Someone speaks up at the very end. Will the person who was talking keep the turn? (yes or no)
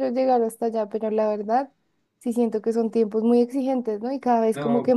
yes